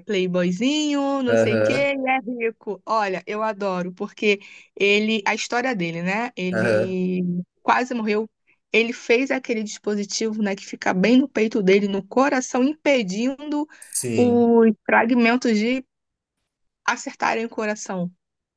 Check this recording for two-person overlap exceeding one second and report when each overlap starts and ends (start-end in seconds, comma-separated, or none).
none